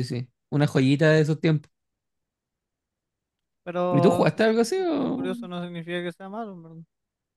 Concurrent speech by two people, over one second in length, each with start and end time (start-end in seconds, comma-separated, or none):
3.9-5.3